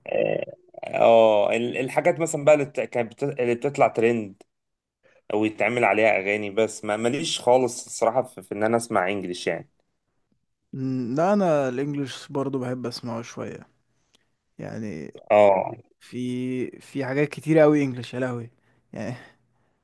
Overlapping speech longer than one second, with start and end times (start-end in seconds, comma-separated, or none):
none